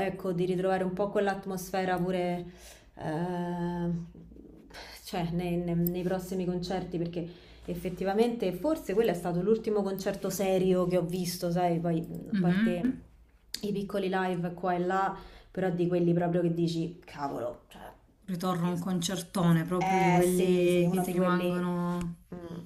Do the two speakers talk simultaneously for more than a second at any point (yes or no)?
yes